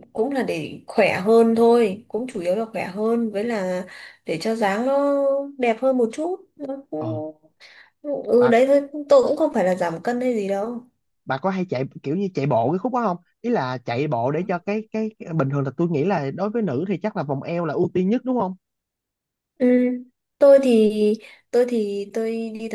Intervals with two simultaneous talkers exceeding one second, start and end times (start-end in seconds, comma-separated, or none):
none